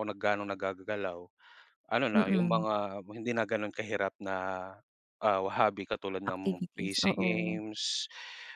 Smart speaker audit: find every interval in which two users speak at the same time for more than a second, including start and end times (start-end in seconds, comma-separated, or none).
6.3-7.6